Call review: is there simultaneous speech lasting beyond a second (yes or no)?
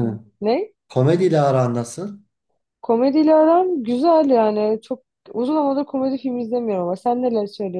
no